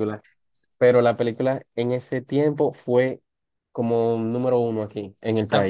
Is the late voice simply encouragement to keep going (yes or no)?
no